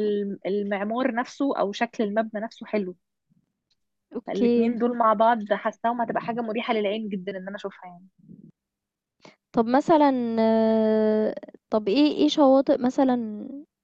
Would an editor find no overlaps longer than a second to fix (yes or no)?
yes